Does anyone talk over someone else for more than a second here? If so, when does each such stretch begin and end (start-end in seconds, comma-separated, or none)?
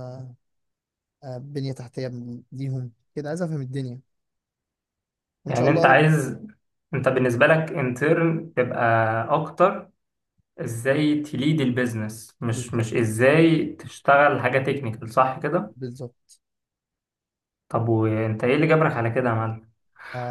none